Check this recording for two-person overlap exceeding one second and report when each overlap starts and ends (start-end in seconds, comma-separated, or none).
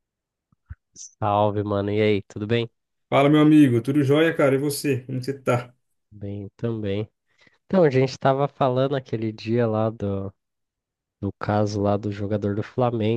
none